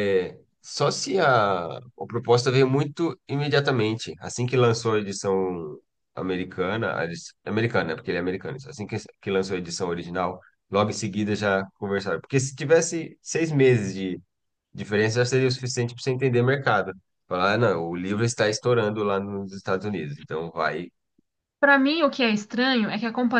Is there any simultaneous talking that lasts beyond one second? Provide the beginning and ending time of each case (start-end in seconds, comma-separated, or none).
none